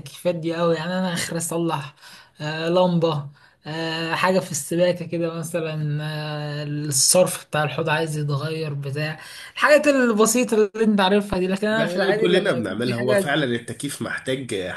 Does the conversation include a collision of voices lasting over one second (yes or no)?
yes